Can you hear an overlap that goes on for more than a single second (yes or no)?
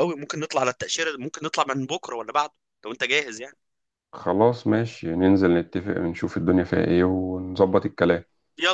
no